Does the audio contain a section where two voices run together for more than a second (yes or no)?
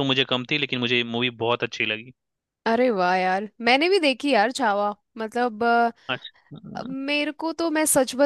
no